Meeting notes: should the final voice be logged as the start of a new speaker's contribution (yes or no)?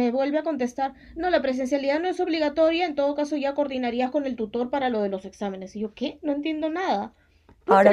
yes